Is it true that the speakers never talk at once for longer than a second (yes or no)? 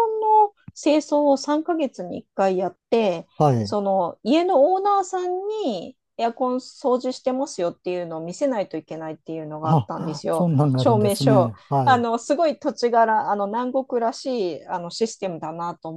no